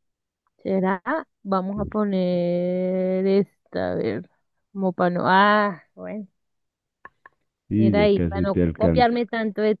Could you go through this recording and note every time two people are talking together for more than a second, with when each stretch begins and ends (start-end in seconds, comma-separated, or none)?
7.8-9.1